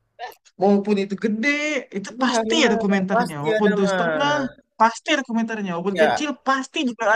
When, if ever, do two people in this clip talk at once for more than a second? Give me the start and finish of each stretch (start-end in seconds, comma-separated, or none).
2.1-4.4